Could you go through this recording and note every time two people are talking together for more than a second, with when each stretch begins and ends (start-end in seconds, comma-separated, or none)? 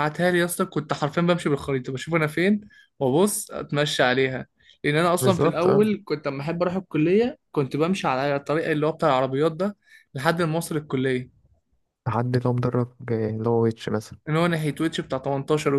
none